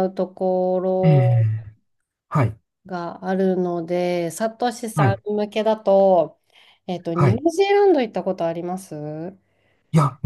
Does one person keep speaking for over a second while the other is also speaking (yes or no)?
no